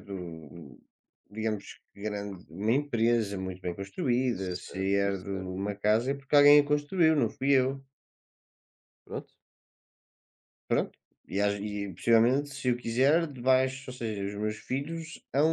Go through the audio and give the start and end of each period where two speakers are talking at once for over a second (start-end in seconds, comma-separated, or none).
4.3-5.8